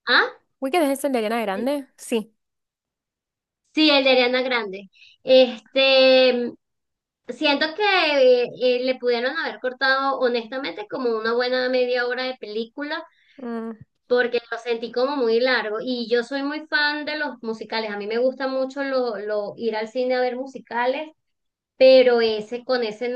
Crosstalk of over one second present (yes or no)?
no